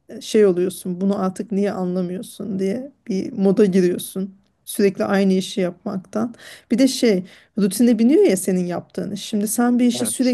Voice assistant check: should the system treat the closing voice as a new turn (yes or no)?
no